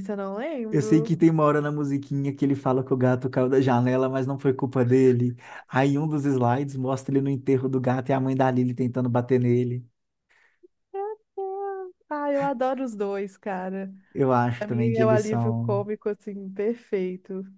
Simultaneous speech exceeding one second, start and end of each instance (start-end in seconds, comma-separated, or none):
14.6-15.8